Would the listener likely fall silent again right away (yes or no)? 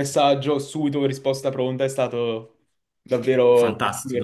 no